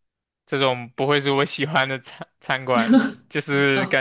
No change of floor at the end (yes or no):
yes